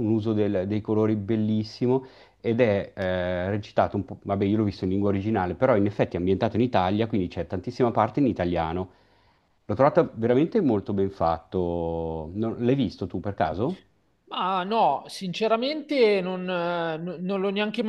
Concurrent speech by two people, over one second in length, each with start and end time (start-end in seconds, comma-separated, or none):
none